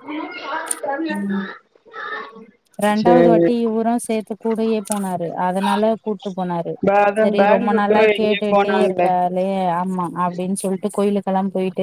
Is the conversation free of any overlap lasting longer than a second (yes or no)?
no